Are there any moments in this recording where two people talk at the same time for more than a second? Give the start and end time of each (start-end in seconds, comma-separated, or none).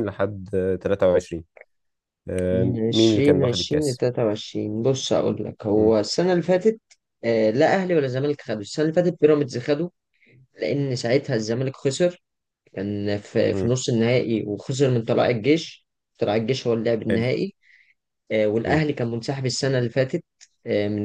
2.5-4.0